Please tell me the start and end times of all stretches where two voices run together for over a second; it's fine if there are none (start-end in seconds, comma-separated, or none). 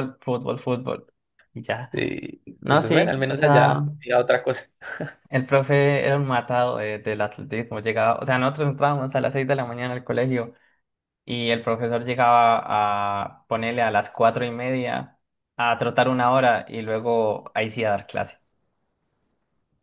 2.6-3.8